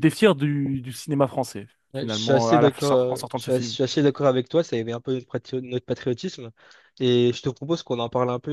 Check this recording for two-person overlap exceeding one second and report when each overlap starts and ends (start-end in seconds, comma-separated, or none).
1.9-3.8